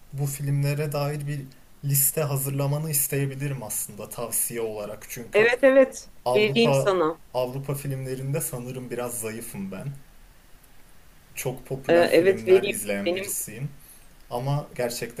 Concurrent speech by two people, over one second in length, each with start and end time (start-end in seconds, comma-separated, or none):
11.9-13.2